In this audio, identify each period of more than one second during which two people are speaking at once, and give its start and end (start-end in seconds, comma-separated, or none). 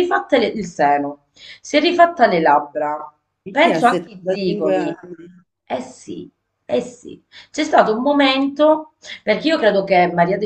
3.6-5.0